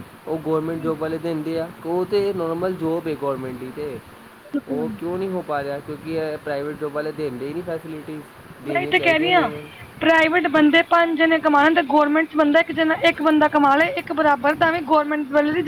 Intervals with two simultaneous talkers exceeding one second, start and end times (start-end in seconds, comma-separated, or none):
none